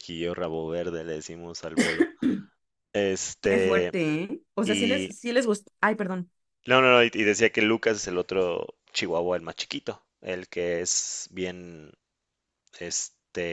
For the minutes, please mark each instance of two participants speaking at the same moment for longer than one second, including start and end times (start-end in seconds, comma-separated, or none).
none